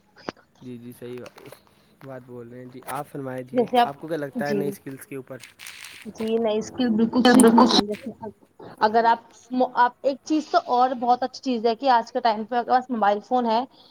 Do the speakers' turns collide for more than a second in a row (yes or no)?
no